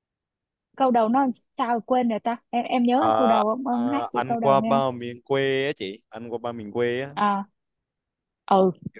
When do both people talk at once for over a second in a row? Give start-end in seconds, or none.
2.9-4.9